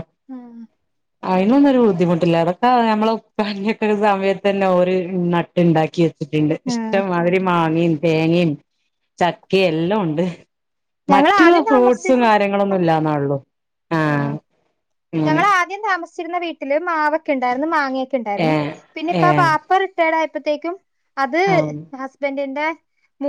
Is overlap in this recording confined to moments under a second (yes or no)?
no